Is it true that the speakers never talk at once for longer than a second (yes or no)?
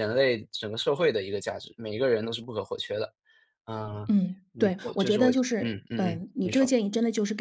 no